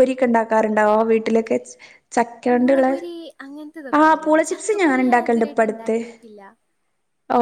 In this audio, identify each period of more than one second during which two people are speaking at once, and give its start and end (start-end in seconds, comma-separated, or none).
4.0-5.9